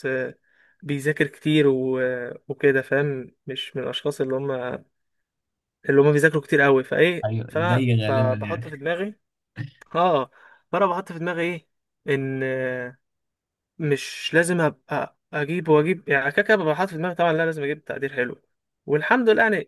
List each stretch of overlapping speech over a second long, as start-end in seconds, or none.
7.2-8.9